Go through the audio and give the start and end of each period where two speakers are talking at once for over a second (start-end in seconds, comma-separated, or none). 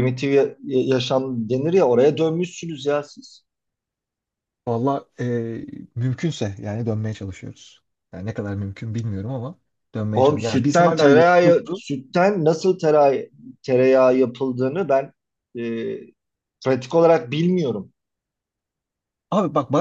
10.1-11.8